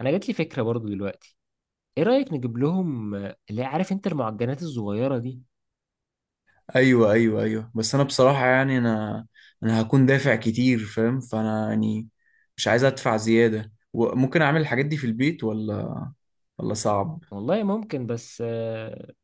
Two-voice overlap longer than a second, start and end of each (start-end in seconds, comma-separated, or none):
none